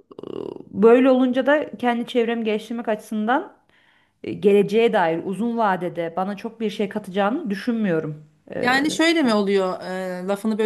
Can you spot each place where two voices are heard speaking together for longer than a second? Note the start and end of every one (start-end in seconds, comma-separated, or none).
none